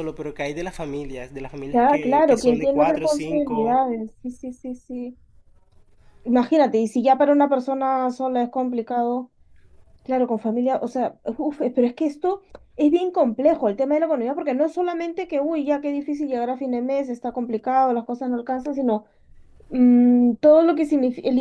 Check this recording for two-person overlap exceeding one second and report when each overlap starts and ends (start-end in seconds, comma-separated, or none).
1.7-3.8